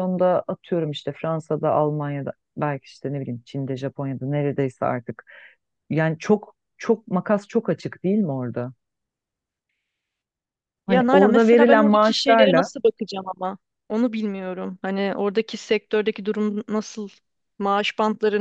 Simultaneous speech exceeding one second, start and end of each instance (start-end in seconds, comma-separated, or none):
10.9-12.7